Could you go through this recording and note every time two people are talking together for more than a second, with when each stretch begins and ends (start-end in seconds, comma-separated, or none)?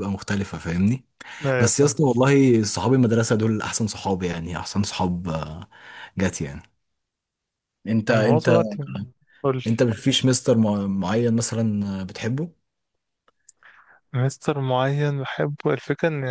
none